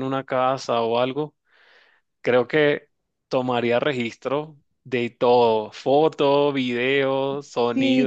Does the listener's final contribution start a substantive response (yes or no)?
yes